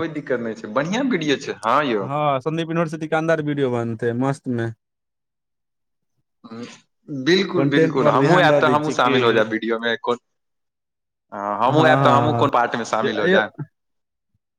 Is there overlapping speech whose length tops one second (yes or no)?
yes